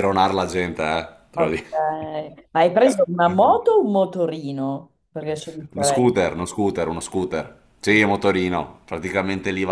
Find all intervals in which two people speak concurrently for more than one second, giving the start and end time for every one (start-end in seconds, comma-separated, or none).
none